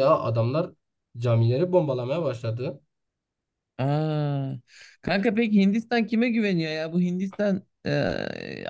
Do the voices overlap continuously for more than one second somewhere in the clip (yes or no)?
no